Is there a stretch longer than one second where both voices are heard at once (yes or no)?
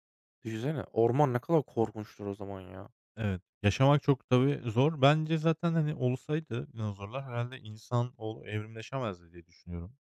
no